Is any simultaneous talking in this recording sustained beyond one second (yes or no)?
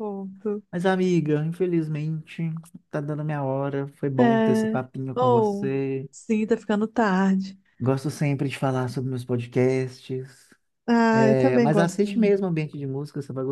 yes